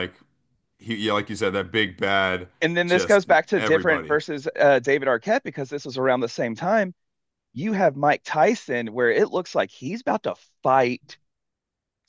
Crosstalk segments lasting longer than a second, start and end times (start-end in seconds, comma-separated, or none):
2.9-4.2